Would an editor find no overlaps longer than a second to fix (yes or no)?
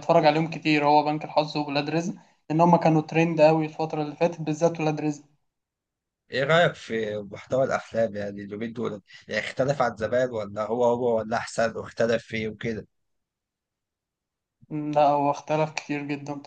yes